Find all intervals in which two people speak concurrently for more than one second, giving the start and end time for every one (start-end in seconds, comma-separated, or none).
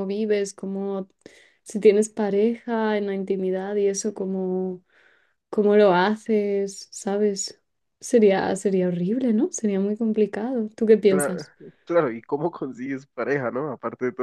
none